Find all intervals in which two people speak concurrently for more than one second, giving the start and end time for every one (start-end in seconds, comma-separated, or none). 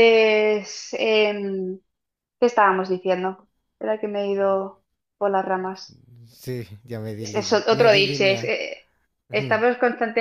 7.2-8.5